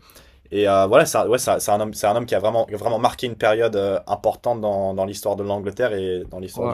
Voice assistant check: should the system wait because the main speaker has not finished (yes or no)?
no